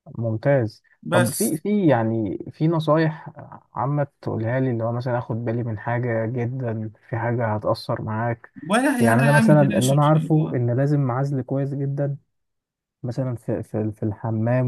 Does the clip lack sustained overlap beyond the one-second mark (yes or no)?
no